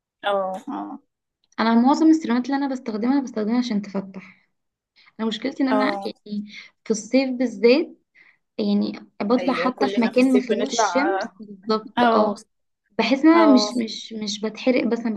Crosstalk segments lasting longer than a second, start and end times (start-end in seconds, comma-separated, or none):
9.4-11.1